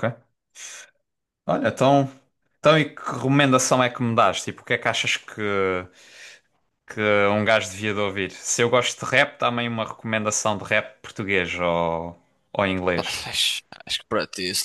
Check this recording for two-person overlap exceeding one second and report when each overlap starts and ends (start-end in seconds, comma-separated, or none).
none